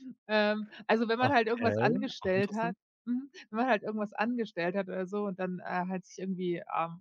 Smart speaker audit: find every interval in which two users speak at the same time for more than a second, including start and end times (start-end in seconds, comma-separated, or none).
1.2-2.8